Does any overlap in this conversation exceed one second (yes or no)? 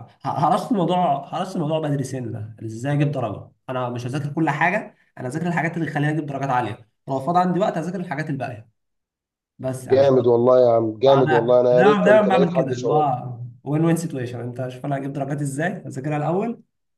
yes